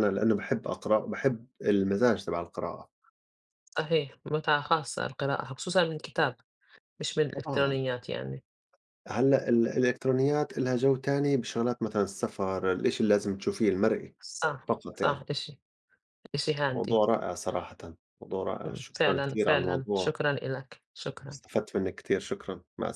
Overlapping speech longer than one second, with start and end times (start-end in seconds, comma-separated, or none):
18.6-20.1